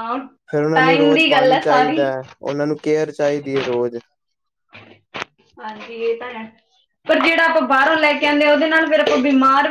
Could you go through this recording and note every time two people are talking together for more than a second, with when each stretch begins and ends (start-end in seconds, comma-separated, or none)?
0.7-2.0